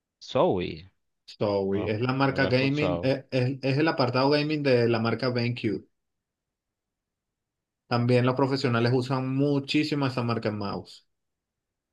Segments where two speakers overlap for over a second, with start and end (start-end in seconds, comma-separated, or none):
1.7-3.1